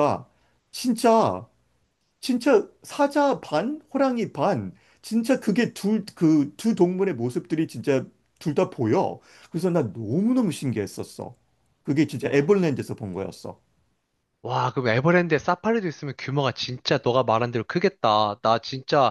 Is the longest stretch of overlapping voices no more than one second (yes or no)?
yes